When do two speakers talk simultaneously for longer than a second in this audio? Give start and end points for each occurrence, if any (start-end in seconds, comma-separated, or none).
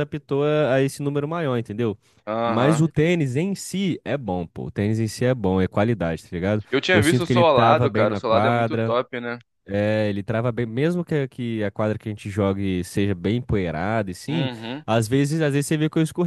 6.7-8.9